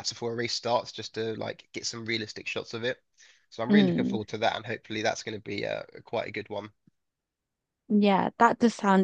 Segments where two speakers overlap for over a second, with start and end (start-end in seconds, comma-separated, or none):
none